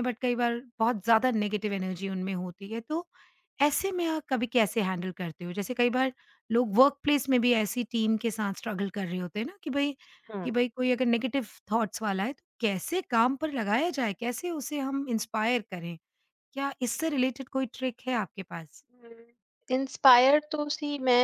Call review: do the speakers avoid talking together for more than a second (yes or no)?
yes